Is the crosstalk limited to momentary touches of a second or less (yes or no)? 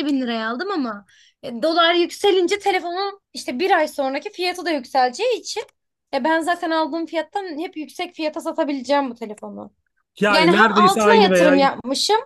no